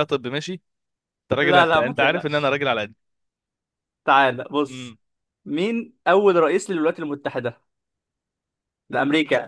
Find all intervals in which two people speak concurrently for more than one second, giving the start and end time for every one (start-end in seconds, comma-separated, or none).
1.4-2.6